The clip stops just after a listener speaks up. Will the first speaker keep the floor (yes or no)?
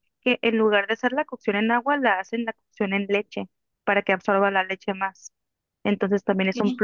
yes